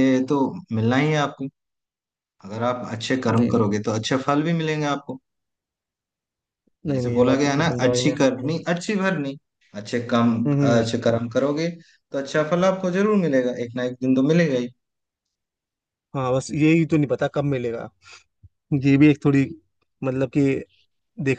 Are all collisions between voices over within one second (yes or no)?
no